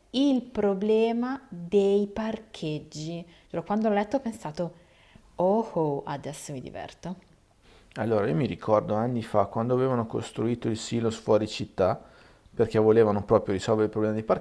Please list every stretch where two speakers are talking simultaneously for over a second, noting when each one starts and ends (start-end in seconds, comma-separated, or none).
none